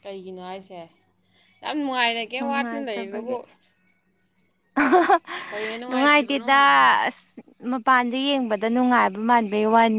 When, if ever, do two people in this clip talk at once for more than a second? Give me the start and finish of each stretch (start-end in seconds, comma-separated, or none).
none